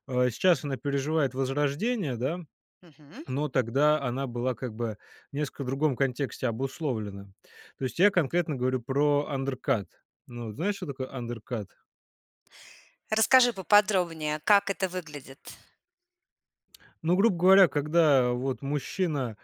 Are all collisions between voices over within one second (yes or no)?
yes